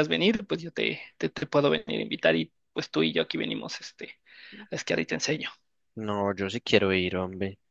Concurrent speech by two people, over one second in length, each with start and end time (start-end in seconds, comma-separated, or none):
none